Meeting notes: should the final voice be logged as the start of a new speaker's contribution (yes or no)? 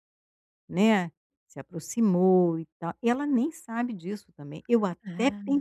no